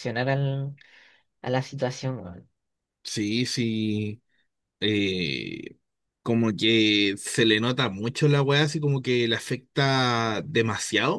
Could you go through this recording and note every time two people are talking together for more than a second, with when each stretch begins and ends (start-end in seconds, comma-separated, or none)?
none